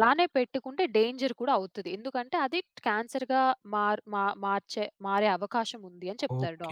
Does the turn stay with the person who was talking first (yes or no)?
no